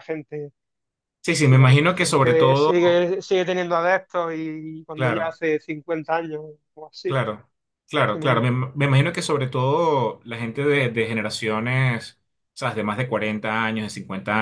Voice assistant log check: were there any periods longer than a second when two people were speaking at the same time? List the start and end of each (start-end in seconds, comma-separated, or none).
1.3-2.7